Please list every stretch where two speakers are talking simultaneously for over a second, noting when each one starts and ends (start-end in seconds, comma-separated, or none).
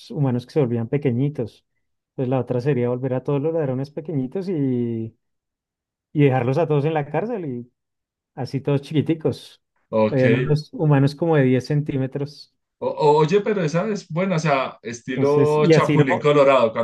15.1-16.3